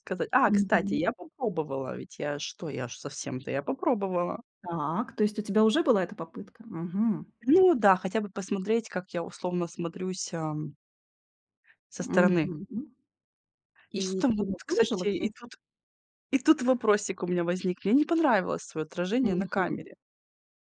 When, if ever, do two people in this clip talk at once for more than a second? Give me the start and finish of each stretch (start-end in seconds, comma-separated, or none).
13.9-15.3